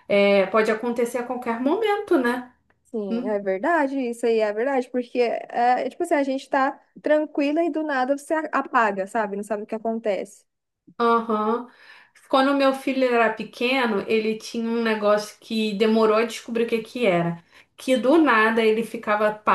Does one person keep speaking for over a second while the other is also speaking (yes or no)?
no